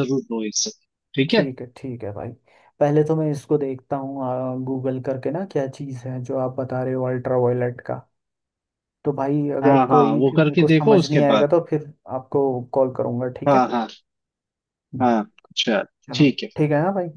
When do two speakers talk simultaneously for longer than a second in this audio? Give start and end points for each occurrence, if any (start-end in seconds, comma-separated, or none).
9.6-11.5